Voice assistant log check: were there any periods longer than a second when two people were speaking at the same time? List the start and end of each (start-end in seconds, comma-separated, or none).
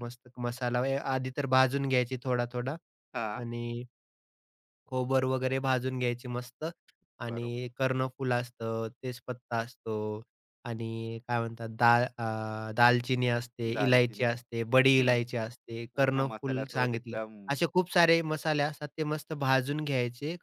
15.9-17.2